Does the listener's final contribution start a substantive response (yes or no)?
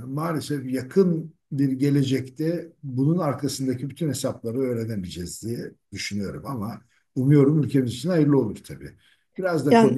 no